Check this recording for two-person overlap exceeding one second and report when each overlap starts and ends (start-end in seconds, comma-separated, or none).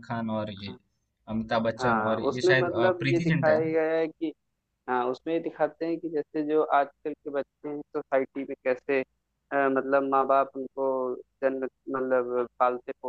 1.8-3.8